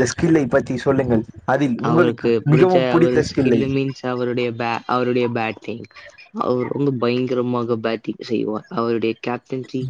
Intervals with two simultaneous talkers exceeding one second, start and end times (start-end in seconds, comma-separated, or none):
1.9-3.6